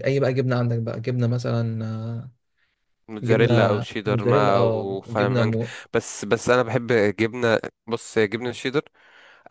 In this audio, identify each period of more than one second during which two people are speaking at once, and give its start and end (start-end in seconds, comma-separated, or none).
3.2-5.5